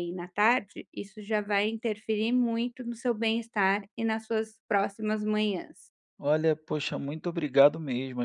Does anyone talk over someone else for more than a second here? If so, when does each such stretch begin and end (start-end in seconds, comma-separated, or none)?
none